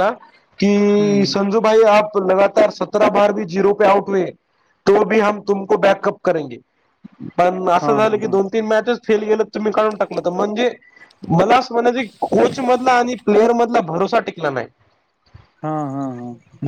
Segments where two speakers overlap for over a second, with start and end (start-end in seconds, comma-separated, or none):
none